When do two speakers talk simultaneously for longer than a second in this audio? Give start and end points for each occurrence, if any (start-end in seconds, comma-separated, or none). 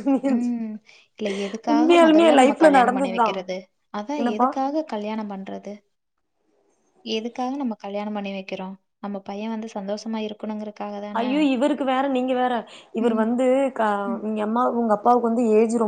1.7-3.3